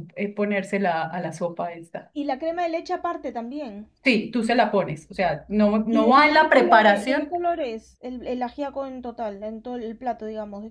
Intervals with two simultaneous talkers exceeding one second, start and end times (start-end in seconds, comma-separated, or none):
5.9-7.3